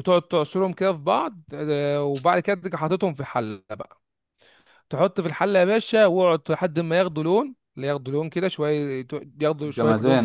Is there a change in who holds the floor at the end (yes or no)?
no